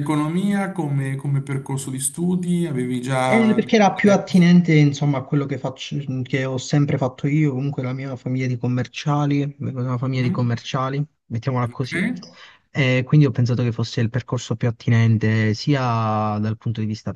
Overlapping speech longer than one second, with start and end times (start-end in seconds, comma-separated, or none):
3.2-4.5